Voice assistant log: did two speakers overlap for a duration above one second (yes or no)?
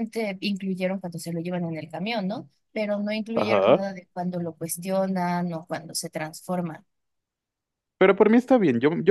no